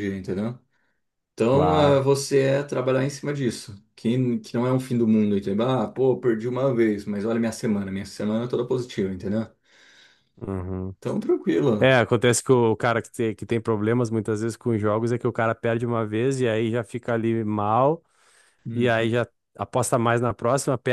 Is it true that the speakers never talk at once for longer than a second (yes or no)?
yes